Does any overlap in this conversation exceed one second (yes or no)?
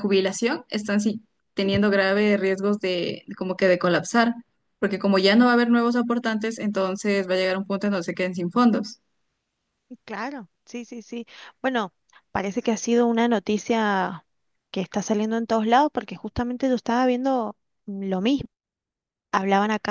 no